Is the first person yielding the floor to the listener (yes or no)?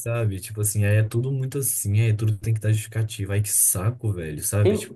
yes